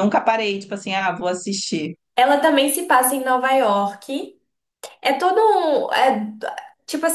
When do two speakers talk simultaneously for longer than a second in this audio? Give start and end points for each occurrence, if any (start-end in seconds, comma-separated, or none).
none